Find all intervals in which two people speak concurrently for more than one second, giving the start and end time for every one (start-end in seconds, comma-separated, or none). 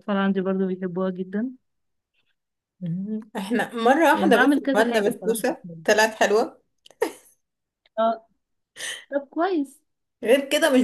4.1-5.8